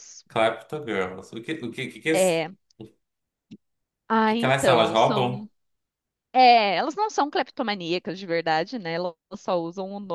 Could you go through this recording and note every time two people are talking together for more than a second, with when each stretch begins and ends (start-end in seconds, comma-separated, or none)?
4.3-5.5